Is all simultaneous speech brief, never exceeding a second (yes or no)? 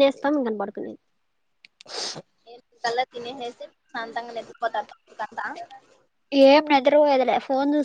yes